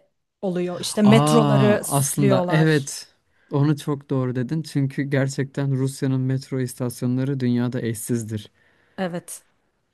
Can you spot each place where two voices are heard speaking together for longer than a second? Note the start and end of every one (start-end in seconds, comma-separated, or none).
1.0-2.9